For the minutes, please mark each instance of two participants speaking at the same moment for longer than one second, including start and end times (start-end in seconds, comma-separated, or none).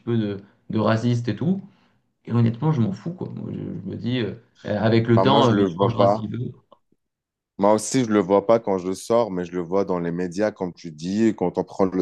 5.1-6.3